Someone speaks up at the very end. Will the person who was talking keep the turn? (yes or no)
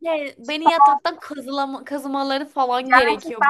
no